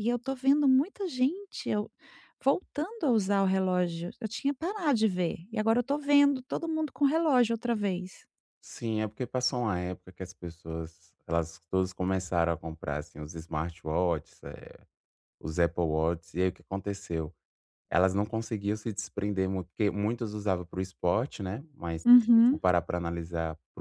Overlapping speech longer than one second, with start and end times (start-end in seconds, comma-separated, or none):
none